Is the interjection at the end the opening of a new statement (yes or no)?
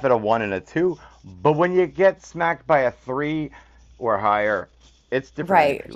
yes